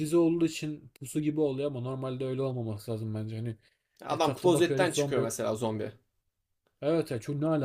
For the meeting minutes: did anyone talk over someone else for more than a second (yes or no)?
yes